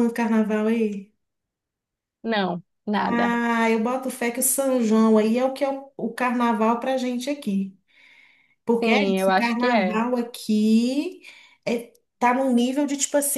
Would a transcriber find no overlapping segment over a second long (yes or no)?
no